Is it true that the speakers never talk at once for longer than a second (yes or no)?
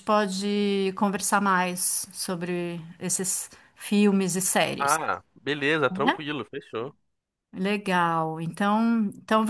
yes